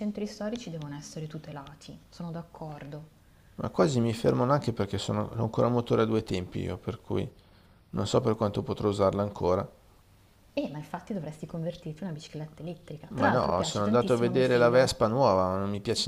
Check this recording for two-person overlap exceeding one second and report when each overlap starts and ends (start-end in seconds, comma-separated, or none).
13.1-14.9